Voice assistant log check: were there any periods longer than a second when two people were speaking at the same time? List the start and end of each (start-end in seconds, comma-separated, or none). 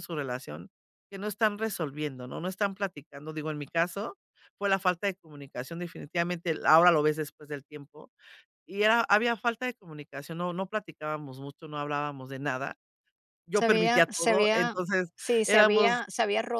13.5-14.8